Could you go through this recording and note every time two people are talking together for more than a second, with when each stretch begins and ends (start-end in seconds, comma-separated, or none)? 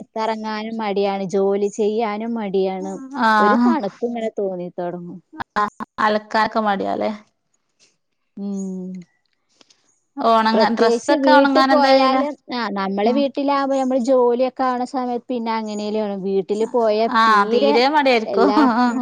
10.5-12.2